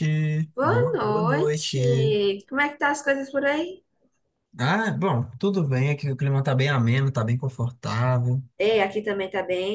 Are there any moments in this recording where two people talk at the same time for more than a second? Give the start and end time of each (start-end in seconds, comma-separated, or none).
0.5-2.1